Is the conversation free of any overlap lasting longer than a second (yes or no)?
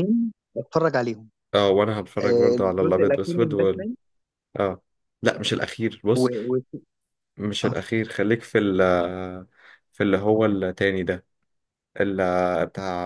no